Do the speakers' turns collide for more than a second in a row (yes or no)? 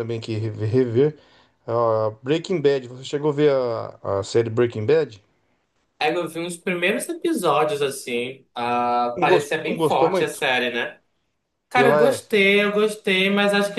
yes